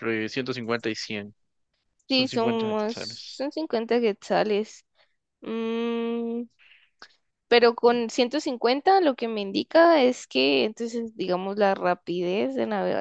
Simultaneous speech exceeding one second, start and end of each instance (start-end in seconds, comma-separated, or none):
2.1-3.4